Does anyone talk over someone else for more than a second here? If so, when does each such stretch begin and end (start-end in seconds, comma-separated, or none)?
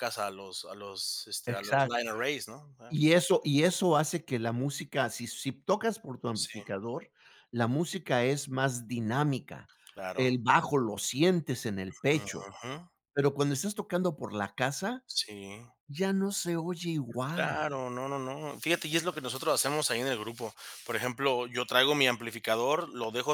none